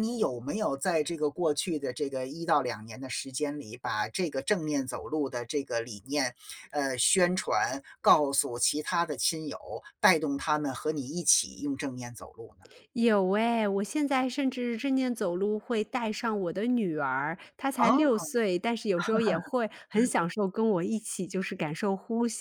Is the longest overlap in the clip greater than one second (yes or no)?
no